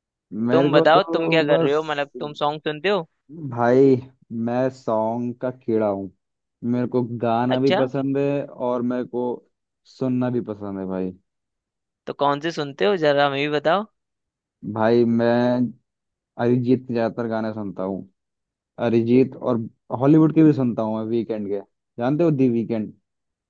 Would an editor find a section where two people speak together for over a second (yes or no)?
yes